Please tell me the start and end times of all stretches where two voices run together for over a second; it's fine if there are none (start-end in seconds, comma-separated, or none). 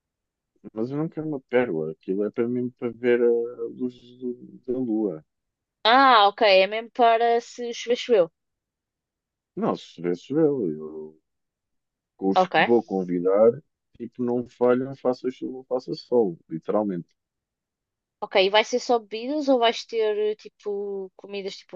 none